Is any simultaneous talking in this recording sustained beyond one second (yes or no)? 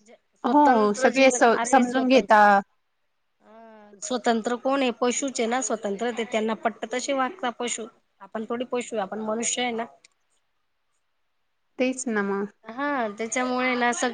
yes